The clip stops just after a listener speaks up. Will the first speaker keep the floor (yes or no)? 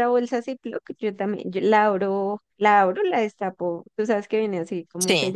yes